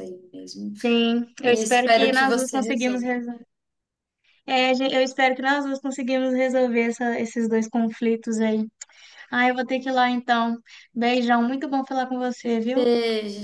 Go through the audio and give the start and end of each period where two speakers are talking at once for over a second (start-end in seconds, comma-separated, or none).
1.4-3.0